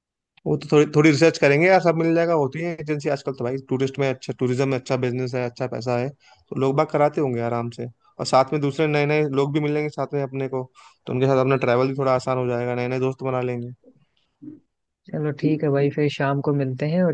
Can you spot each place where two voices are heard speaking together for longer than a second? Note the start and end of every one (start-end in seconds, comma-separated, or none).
none